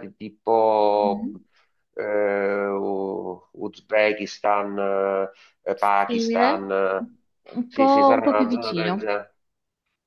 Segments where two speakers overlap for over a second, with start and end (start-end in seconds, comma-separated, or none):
7.7-9.1